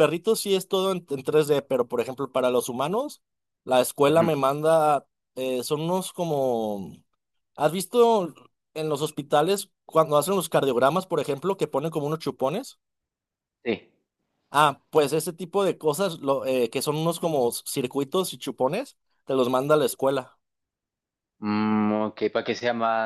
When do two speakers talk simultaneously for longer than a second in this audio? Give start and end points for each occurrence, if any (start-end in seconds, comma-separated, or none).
none